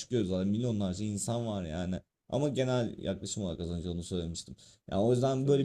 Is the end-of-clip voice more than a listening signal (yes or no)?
no